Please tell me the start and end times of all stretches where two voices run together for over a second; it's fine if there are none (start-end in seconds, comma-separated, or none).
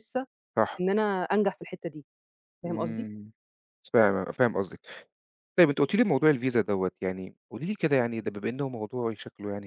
none